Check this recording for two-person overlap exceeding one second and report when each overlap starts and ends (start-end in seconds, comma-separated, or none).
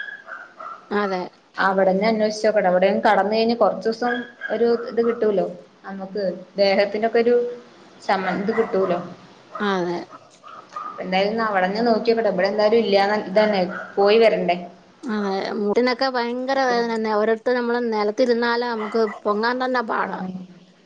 none